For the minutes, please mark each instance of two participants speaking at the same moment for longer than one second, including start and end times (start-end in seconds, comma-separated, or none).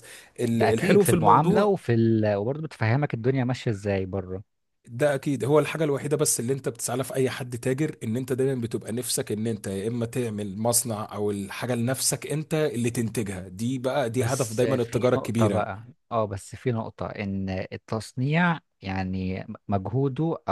0.5-1.7, 14.2-15.7